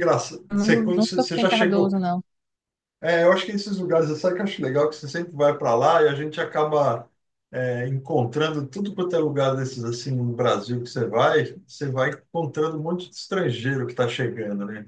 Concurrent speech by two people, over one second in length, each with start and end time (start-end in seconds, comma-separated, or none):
0.5-1.9